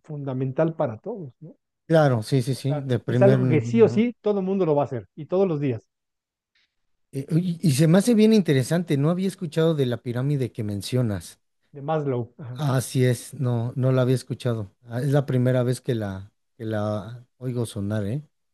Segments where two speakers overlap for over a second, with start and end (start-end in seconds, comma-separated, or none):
2.5-4.0